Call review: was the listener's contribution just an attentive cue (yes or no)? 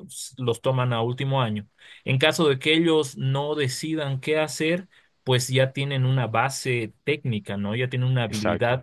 yes